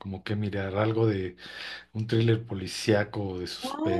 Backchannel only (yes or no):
yes